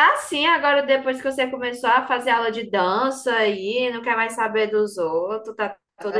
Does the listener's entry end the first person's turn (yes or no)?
yes